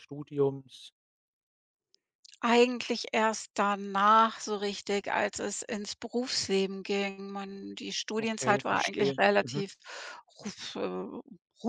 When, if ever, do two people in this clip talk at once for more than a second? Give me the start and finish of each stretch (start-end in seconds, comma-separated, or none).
8.2-9.6